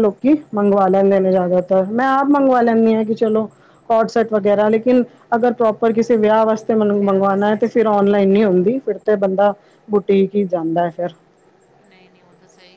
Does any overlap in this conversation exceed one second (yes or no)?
yes